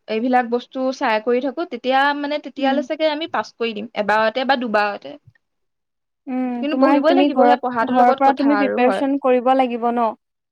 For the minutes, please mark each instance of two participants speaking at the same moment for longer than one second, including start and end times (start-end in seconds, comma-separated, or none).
6.6-9.0